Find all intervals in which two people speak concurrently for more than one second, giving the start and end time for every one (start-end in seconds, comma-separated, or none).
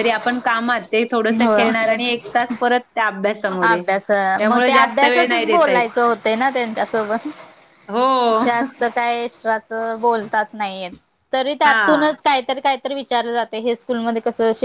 4.5-5.9